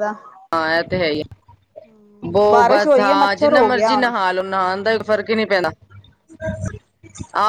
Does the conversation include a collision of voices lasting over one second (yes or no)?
yes